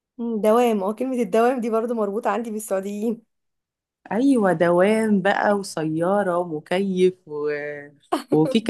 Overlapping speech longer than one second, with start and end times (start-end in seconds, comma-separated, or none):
none